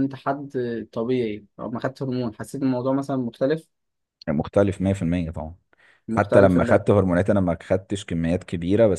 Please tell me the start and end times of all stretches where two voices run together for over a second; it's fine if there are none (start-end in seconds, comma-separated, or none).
none